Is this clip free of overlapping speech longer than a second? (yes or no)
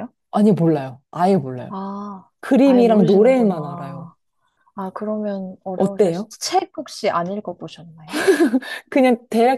no